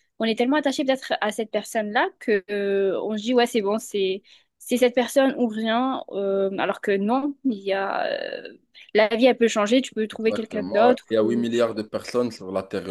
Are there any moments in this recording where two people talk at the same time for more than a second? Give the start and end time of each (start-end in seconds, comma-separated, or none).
10.1-11.4